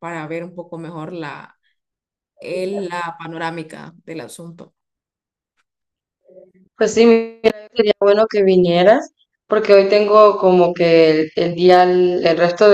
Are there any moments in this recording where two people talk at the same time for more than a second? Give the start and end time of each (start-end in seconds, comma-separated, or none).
none